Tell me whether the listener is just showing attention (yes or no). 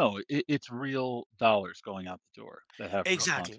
no